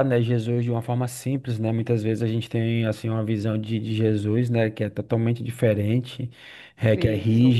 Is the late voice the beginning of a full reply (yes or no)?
no